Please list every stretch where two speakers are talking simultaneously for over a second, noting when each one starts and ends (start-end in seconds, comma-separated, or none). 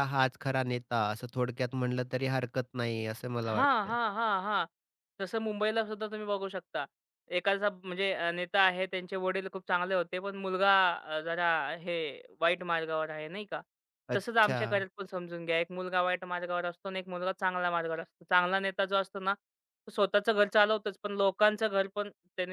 none